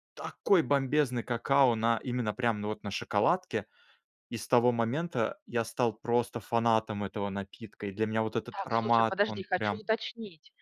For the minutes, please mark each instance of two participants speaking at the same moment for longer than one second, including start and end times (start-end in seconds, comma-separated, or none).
8.5-9.8